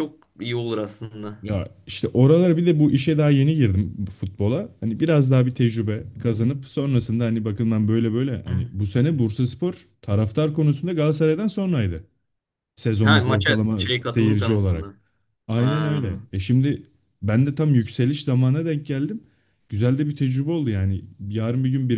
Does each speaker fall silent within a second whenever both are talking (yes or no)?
no